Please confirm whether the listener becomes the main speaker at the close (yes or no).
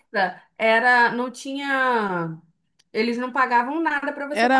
yes